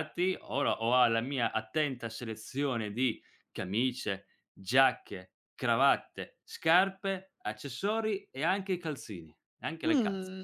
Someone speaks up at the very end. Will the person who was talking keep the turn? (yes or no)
no